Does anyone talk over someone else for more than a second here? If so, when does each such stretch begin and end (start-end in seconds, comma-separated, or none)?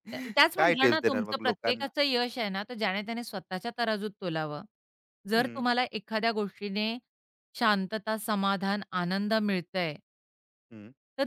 0.6-1.9